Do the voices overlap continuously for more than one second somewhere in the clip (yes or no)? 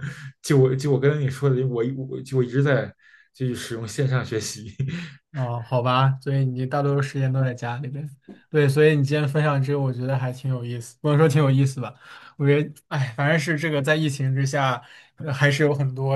no